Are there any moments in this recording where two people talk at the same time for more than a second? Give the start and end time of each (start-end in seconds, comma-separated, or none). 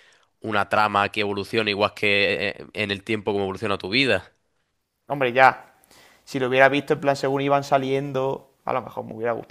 none